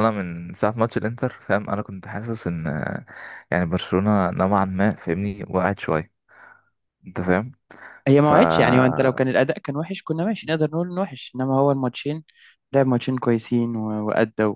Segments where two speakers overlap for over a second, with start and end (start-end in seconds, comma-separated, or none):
none